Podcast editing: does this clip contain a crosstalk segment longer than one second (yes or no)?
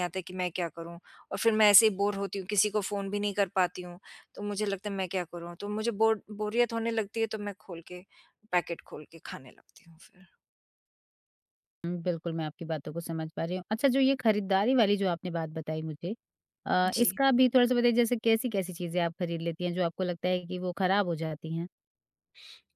no